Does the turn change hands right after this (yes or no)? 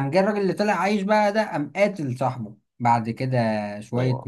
no